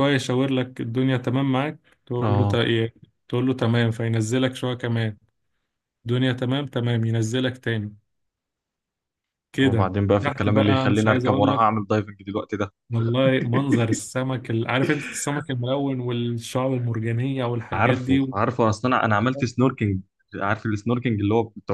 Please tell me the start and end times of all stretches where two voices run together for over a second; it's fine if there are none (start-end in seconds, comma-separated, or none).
9.6-11.7